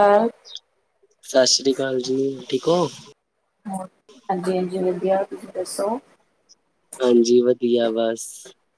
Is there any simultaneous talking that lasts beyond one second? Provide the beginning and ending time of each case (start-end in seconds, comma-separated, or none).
none